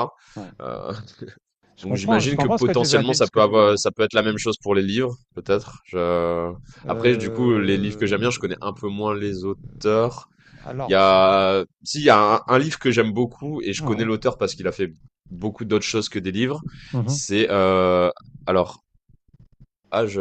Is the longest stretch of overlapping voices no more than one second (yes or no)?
no